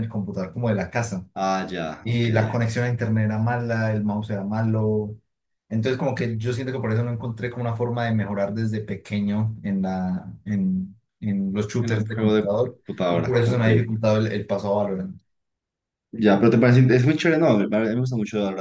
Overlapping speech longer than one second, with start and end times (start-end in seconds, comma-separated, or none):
11.8-13.7